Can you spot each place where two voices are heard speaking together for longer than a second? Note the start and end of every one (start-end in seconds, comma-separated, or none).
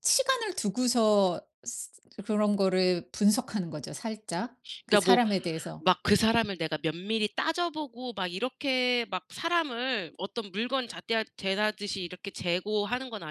none